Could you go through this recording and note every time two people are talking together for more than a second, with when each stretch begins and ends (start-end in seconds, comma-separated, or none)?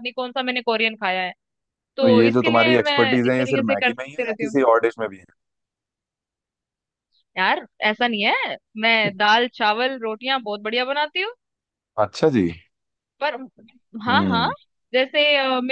2.0-4.6